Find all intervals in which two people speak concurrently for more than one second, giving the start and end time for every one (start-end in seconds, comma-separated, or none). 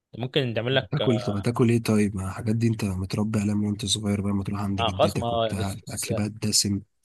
4.8-6.1